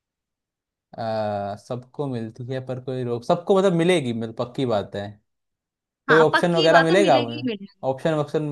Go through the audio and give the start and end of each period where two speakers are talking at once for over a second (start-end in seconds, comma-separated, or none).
6.1-7.4